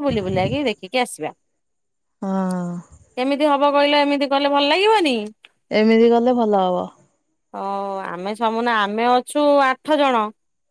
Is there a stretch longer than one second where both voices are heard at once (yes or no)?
no